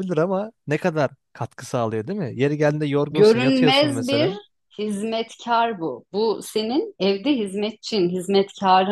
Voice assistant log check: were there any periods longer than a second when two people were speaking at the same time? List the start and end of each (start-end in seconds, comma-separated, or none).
3.1-4.3